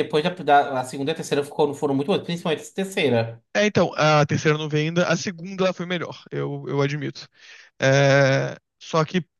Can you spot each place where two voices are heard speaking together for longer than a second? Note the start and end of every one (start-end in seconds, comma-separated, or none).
none